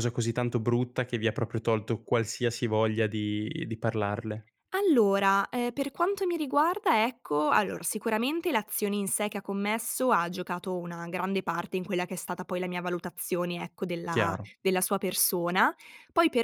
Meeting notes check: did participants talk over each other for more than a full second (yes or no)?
no